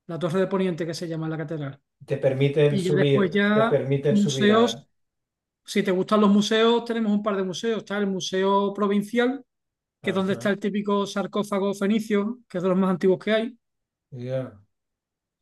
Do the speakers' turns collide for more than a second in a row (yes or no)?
yes